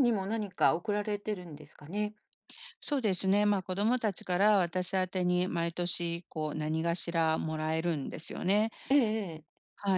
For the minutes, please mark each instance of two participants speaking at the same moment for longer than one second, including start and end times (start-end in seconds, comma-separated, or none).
none